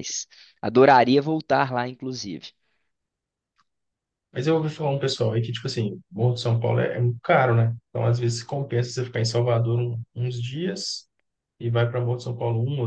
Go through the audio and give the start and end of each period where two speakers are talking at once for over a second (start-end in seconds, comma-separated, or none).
none